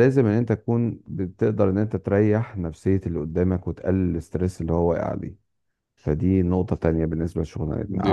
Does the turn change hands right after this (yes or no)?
yes